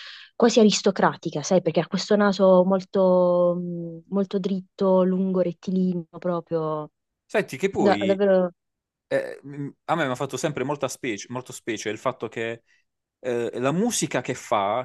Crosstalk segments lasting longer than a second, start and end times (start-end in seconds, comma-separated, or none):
none